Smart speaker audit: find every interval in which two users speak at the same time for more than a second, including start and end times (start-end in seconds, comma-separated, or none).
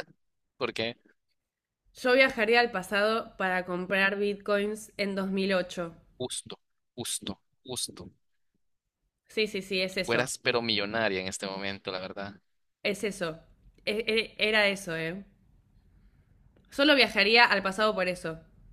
none